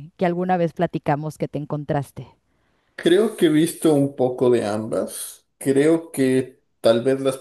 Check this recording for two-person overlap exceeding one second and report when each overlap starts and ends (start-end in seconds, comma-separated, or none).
none